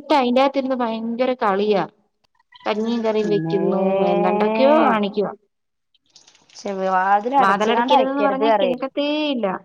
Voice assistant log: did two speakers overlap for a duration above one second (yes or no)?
yes